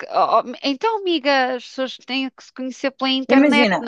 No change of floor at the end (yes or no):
no